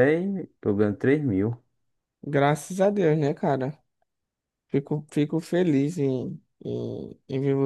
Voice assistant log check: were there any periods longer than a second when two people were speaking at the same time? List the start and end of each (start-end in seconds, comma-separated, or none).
none